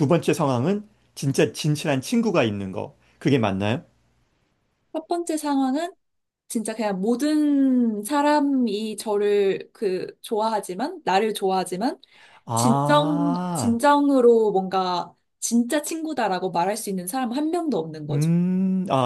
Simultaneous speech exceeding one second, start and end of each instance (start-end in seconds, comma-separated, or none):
12.5-13.8